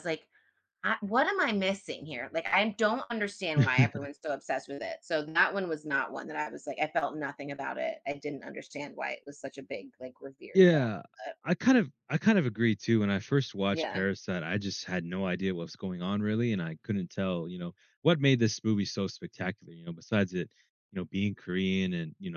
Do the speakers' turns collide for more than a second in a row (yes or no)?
no